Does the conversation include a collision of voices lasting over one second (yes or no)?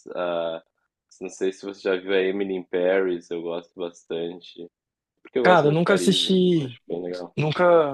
yes